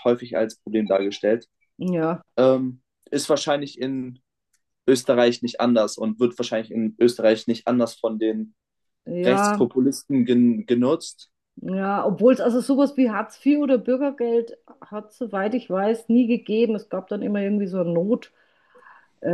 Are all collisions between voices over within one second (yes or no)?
yes